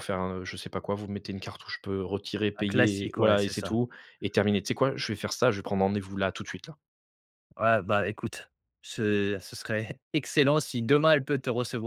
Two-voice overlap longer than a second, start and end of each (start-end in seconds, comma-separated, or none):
2.6-3.8